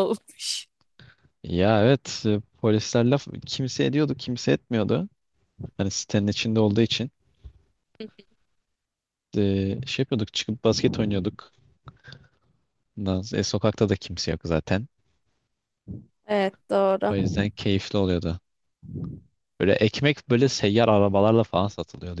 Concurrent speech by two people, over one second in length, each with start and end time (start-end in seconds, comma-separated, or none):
none